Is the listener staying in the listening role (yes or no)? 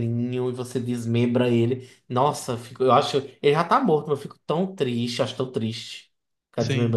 no